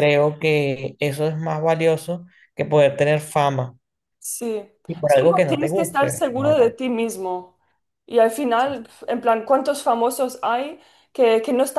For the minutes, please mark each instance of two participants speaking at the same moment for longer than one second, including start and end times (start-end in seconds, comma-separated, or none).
5.1-6.5